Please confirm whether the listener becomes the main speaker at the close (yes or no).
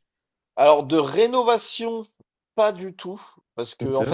no